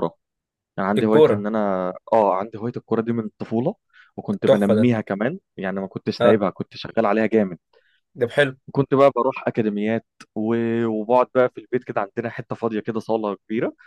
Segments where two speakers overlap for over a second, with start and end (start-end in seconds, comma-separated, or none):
none